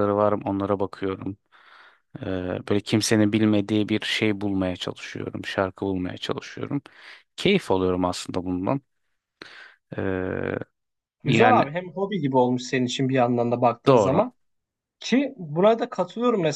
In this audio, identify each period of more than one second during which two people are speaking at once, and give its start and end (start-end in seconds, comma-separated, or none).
none